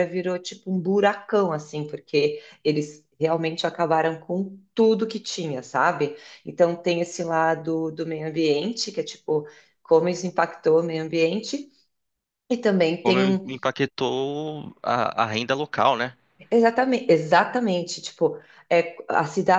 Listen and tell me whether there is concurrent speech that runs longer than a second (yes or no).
no